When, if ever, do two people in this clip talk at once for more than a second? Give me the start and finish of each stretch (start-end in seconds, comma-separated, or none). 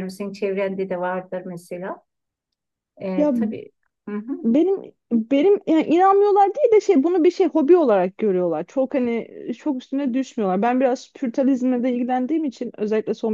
none